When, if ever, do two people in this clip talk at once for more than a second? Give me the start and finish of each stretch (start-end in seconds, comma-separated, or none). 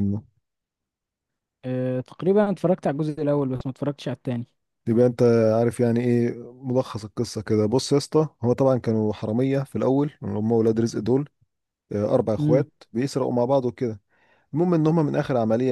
none